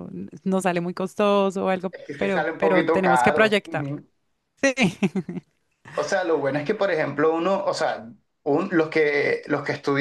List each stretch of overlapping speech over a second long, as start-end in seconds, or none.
2.1-4.0